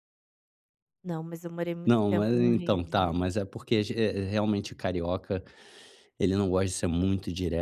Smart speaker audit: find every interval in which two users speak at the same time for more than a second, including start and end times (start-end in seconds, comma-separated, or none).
1.9-3.2